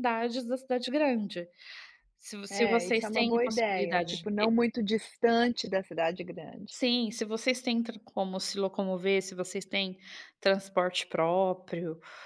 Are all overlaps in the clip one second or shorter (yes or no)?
no